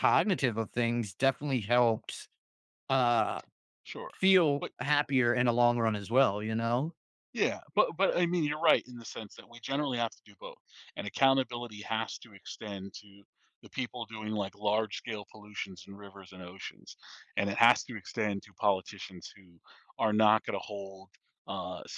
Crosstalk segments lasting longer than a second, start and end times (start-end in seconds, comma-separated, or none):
none